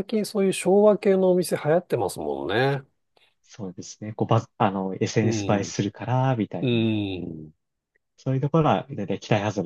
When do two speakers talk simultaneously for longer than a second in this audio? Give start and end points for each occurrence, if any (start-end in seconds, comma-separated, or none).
none